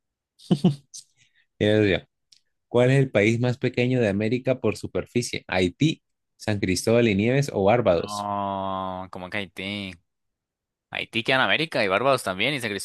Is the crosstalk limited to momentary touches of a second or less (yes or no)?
yes